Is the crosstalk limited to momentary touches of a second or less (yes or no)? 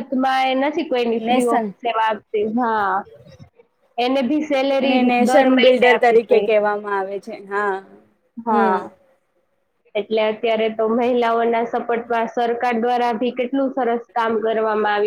no